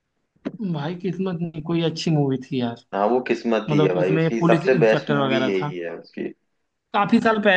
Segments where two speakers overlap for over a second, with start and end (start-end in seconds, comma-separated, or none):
3.7-5.7